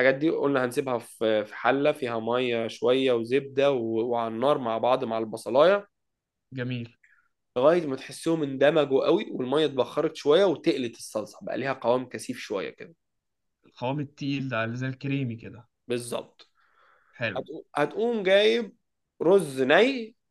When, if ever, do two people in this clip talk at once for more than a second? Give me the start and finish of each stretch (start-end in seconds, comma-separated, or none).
none